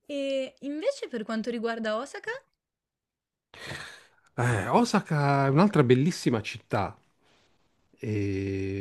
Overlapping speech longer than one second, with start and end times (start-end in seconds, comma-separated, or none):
none